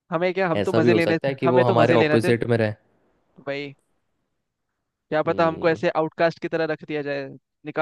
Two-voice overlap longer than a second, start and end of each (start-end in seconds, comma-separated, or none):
0.6-2.3